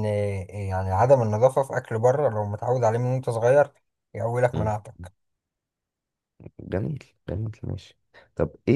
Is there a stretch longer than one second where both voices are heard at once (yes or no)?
no